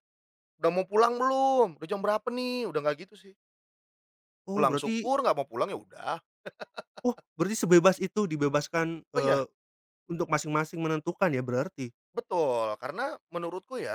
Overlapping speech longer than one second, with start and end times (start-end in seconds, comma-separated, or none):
none